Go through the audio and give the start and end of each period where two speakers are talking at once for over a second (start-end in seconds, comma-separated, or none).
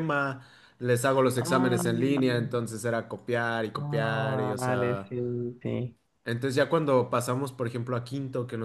3.8-5.1